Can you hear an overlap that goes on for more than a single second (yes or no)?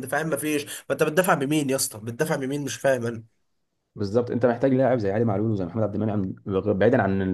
no